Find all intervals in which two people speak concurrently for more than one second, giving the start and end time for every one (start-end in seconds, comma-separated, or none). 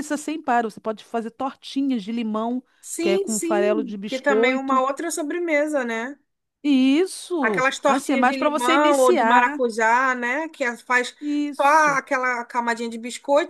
3.0-4.8, 7.4-9.6